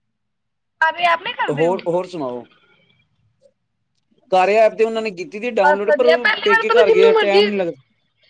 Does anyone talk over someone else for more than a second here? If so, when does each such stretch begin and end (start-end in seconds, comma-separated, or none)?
5.7-7.5